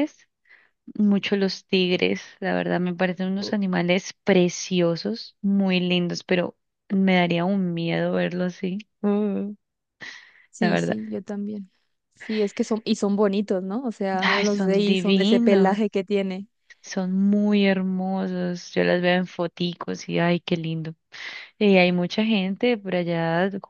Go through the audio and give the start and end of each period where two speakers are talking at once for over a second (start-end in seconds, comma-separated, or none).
14.2-15.8